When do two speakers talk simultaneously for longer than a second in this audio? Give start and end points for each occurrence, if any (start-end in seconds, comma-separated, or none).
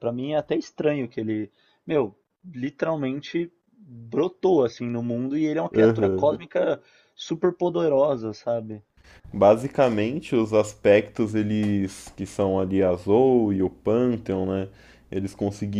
none